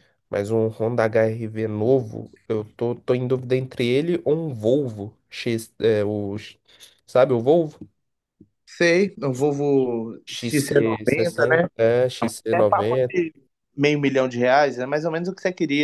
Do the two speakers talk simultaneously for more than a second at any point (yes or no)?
yes